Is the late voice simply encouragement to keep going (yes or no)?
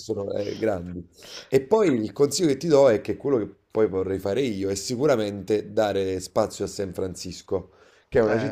yes